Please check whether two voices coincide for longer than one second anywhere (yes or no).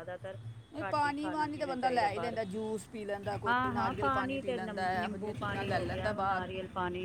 yes